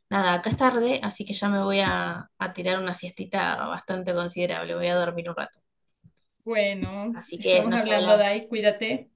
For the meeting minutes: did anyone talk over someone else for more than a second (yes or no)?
yes